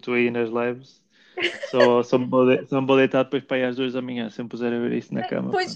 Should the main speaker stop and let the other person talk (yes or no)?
yes